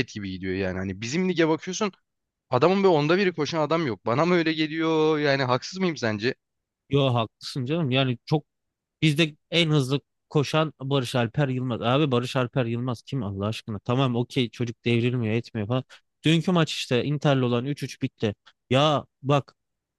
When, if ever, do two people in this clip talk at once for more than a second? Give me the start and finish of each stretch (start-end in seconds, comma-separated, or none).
none